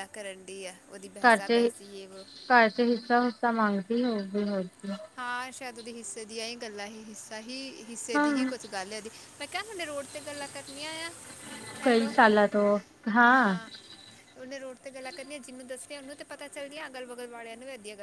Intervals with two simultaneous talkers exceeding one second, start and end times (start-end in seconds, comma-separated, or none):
none